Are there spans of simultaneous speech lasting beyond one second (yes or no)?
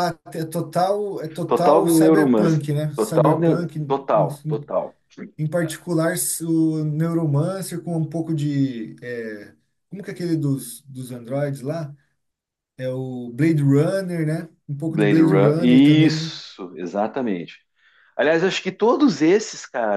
yes